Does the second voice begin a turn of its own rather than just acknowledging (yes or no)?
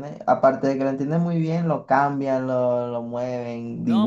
yes